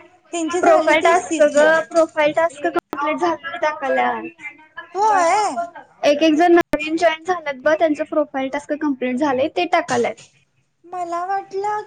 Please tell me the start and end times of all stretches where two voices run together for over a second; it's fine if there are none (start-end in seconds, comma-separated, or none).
none